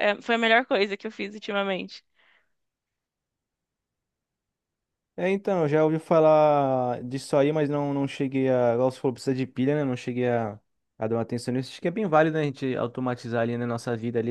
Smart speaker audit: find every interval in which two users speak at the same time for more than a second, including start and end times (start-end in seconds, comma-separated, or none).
none